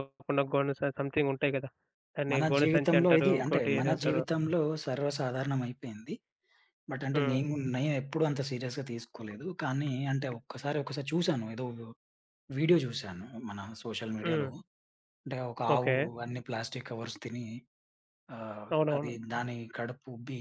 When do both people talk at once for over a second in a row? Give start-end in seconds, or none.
2.3-4.2